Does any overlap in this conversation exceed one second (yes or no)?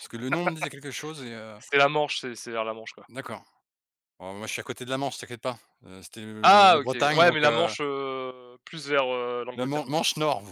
yes